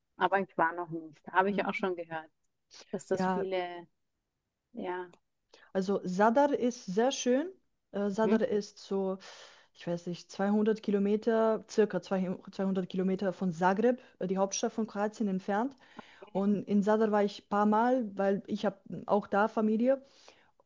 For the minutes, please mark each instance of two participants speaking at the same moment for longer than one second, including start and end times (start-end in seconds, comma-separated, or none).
none